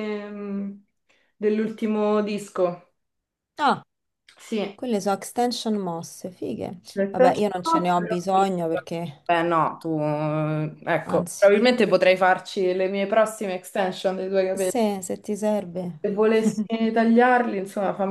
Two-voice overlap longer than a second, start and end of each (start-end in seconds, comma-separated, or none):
6.9-8.5